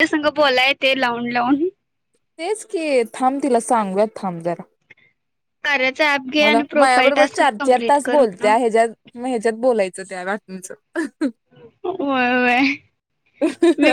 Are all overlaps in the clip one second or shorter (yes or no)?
no